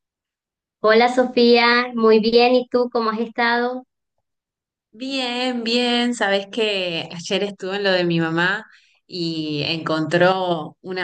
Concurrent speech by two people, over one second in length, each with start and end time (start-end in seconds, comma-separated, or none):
none